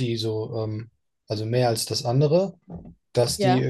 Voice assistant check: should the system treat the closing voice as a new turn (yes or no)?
no